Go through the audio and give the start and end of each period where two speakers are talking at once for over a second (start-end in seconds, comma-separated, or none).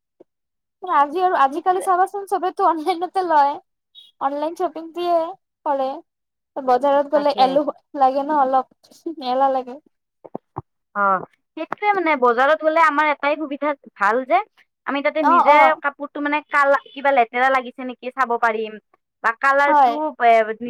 none